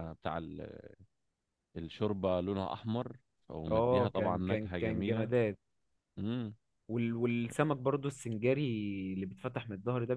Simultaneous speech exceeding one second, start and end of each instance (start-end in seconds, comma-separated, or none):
3.7-5.3